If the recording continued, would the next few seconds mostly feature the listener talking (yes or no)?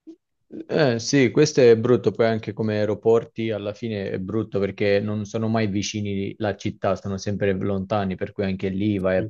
no